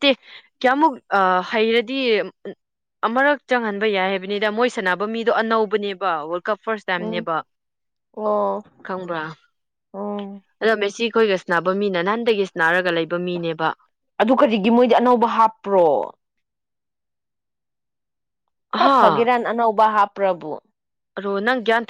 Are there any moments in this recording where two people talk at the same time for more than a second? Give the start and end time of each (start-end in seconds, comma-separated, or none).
none